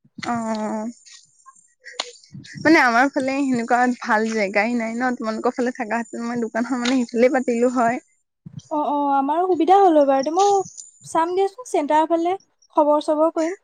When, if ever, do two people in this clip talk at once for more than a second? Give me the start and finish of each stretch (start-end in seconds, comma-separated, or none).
none